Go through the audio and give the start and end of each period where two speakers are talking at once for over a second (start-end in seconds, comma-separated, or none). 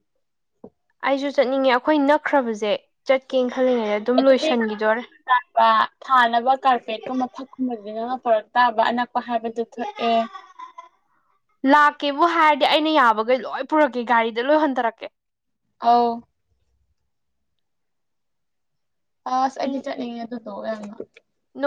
none